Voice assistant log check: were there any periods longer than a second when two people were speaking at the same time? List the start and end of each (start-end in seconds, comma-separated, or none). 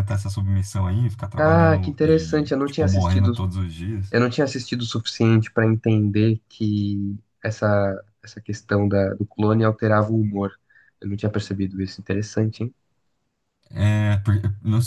1.4-3.3